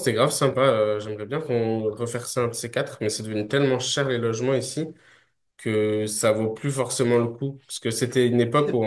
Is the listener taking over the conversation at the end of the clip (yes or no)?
no